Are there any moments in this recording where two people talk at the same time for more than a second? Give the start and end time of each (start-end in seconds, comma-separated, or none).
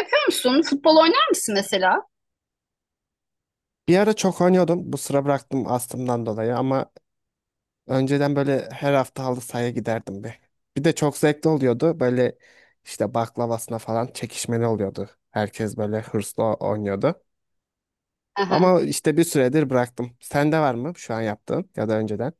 none